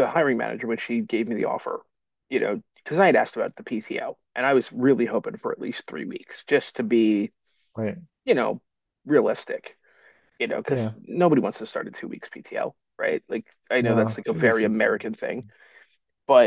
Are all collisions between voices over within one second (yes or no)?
no